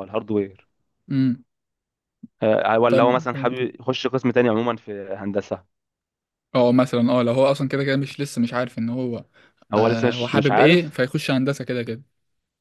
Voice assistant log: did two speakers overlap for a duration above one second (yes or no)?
yes